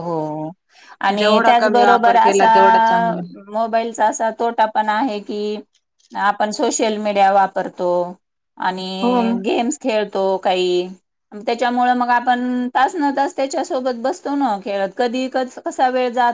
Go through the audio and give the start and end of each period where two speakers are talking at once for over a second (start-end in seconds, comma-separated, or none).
1.2-2.5